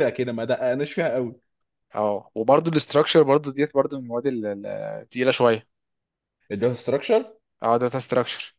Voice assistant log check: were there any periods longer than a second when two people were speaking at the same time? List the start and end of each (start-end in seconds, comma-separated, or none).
none